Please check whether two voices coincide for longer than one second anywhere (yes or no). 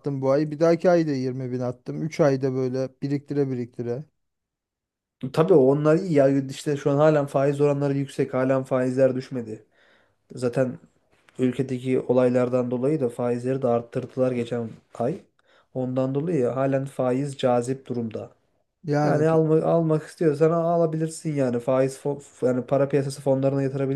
no